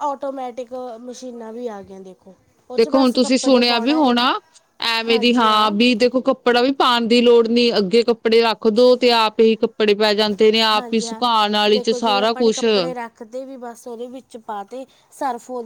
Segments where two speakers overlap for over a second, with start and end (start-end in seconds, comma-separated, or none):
2.8-4.0